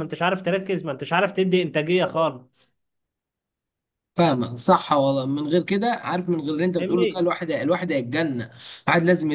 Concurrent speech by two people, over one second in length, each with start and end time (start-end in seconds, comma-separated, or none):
none